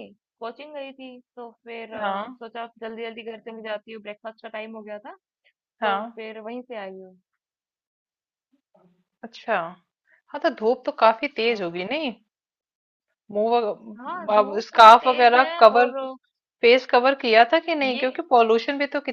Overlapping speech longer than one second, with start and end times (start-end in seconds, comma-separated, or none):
14.0-15.9